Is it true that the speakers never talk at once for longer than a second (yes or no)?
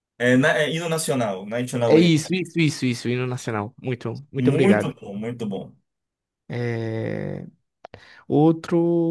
yes